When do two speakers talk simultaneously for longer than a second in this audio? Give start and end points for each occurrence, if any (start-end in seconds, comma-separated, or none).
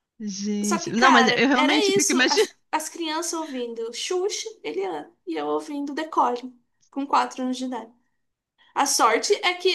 0.6-2.5